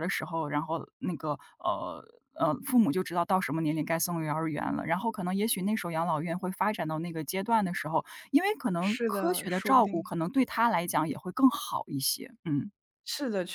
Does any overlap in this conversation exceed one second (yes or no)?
yes